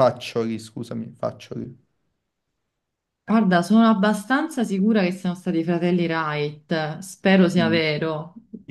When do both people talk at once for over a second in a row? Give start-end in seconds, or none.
none